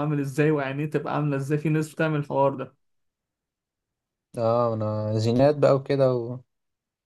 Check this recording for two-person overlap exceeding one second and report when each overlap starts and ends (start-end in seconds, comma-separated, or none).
none